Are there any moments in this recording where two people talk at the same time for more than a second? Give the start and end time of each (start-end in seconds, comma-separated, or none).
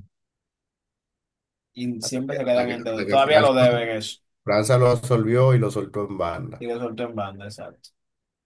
2.0-3.5